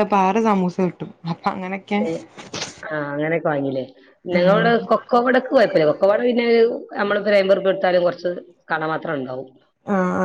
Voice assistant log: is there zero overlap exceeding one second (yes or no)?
yes